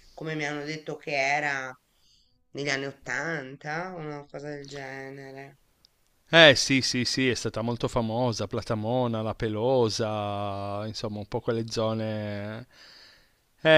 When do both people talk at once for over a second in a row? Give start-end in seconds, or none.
none